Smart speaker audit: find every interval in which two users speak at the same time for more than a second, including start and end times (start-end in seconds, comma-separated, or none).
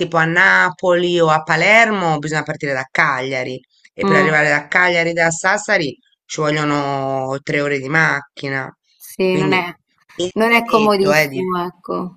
10.3-11.6